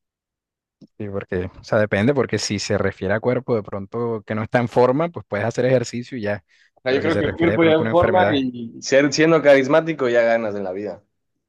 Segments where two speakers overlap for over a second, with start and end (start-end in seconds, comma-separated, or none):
6.9-8.4